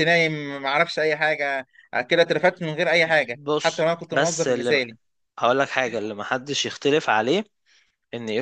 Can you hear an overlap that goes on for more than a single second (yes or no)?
yes